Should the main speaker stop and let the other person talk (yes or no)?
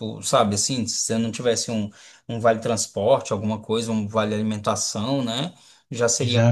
no